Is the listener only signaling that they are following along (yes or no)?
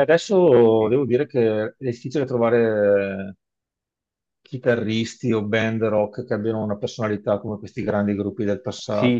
no